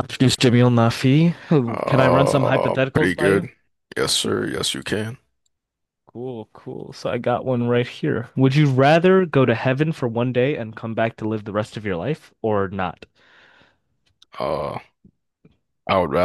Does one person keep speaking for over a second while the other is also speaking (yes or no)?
yes